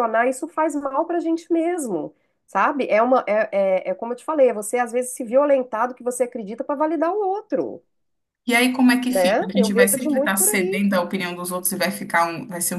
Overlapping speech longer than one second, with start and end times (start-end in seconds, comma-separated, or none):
9.1-10.8